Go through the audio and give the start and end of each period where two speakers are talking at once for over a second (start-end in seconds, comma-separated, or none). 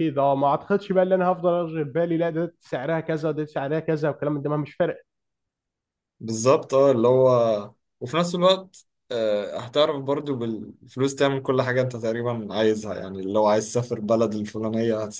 none